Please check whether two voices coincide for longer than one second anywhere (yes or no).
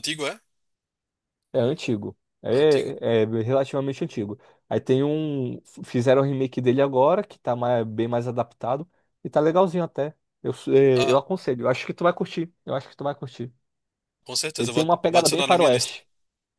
yes